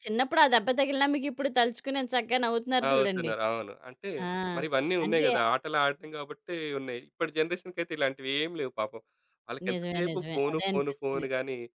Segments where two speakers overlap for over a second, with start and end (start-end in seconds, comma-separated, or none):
9.7-11.2